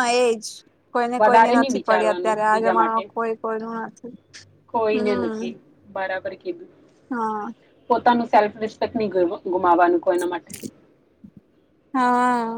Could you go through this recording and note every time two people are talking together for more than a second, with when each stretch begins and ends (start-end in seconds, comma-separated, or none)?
1.2-3.0